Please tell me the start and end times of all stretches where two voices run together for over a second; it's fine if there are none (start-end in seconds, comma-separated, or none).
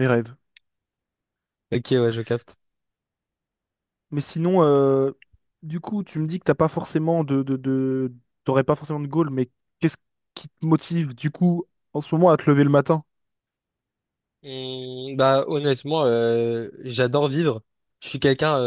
none